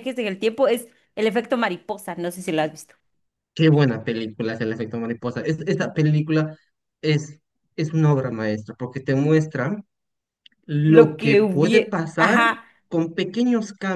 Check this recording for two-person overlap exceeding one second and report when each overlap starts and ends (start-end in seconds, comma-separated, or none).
10.8-12.4